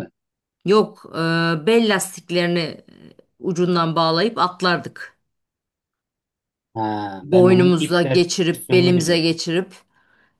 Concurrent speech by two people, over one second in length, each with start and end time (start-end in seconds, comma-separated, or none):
7.2-9.3